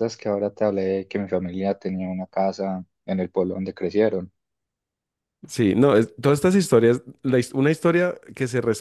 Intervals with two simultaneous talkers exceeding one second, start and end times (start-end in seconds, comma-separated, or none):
none